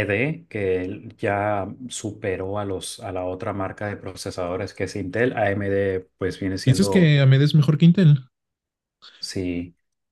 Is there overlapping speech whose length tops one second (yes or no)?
no